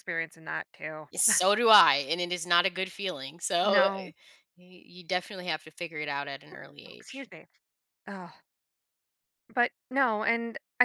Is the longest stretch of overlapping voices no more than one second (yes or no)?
yes